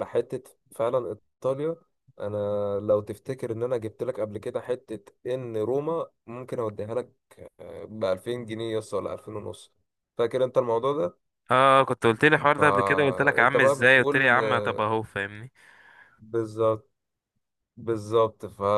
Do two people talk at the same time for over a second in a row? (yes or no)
yes